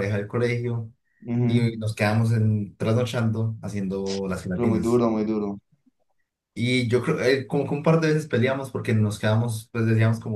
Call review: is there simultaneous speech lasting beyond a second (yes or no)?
no